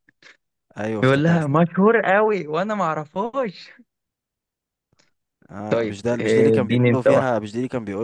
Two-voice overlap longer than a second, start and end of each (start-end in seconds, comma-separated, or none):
5.7-7.4